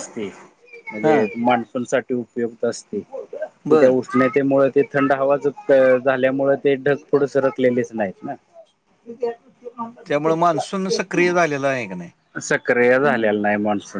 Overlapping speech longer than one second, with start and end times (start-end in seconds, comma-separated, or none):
none